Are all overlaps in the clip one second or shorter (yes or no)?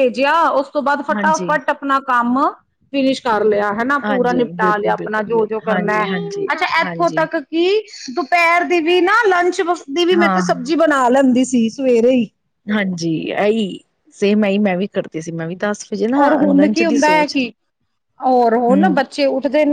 no